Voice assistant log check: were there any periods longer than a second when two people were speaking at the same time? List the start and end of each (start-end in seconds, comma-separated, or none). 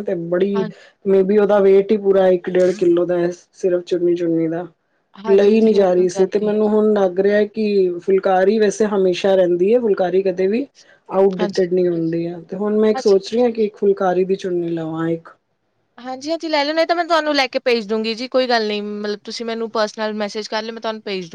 5.3-6.6